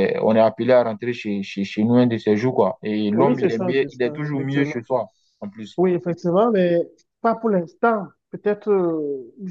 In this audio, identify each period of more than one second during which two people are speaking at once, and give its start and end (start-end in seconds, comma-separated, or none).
3.1-4.8